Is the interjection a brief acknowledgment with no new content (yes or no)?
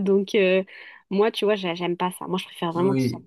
yes